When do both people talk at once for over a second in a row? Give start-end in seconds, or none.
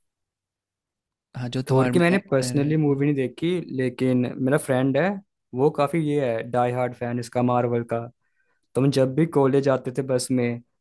1.7-3.0